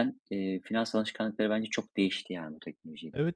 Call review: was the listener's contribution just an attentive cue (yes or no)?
no